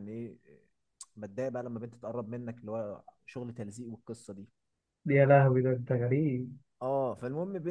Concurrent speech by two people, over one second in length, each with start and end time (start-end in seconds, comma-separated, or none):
none